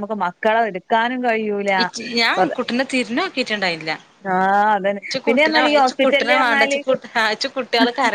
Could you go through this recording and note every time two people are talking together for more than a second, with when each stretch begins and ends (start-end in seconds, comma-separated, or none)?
5.0-6.8